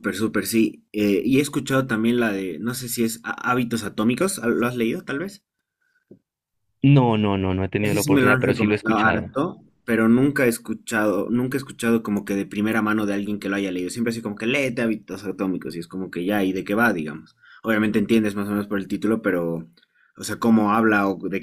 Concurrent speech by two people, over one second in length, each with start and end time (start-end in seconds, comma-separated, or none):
7.8-9.3